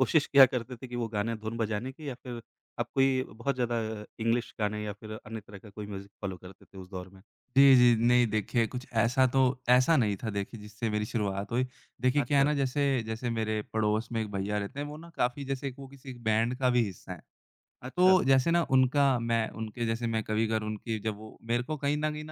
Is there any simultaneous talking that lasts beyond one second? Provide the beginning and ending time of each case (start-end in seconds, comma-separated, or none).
none